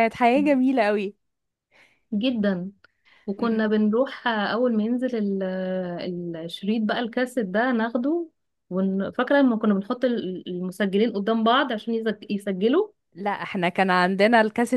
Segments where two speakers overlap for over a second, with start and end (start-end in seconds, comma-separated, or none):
none